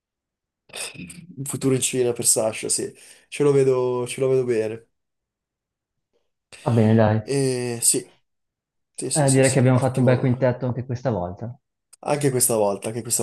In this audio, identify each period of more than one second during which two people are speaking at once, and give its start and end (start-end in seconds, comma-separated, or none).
9.1-10.3